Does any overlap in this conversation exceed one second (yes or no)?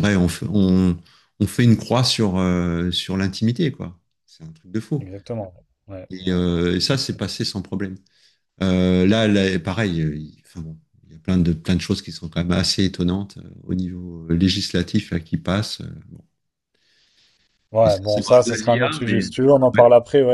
yes